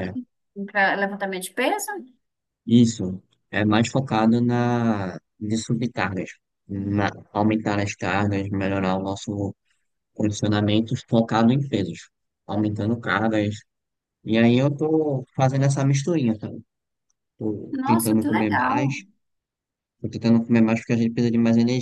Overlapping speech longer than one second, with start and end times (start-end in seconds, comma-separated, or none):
17.7-19.0